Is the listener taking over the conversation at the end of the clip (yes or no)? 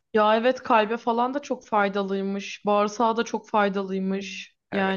yes